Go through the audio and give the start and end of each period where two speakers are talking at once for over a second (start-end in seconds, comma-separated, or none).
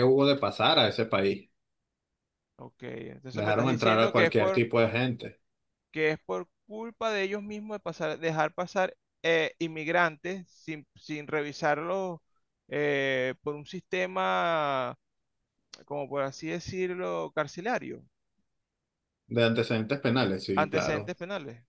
3.3-4.6